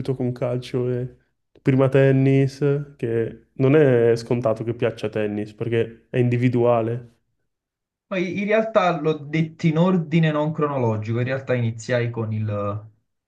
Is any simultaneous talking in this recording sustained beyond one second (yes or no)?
no